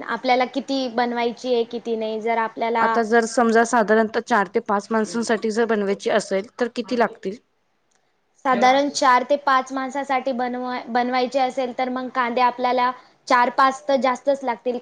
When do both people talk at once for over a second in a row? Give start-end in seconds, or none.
none